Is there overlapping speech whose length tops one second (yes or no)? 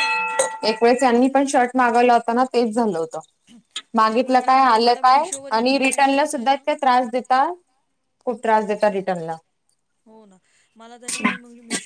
yes